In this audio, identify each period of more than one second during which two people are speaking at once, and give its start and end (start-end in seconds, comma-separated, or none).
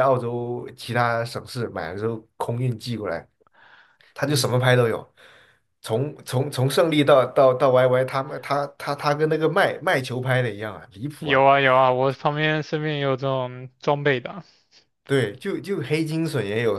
none